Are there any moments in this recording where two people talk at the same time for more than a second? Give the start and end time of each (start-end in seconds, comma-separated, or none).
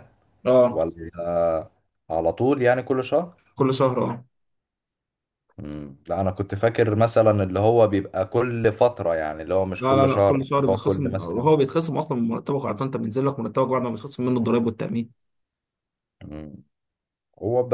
9.8-11.5